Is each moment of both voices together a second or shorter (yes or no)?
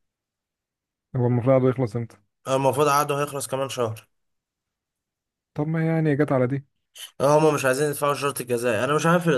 yes